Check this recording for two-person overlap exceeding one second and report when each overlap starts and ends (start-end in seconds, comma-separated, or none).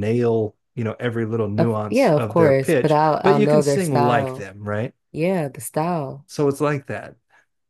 1.6-4.5